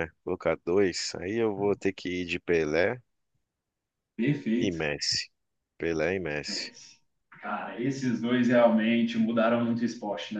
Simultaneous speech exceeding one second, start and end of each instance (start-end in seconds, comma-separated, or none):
none